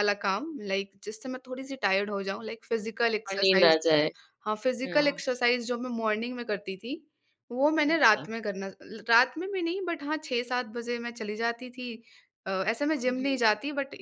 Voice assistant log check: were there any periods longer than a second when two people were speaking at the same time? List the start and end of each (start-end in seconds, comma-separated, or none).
none